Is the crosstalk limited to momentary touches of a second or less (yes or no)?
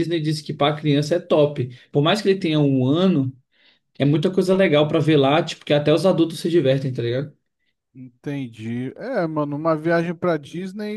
yes